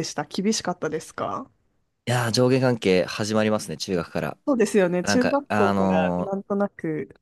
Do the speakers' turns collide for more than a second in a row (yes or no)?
yes